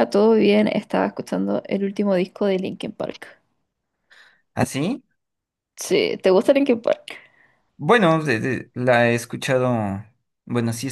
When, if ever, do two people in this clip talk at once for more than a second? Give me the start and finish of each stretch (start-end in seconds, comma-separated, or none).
none